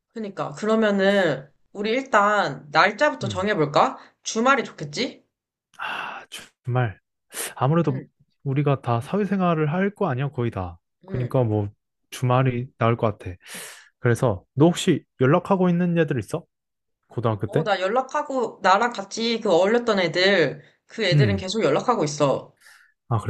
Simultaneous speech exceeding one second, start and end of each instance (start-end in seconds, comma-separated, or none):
none